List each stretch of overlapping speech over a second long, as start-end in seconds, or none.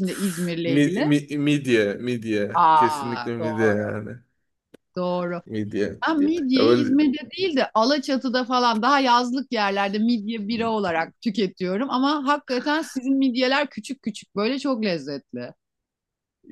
2.5-3.9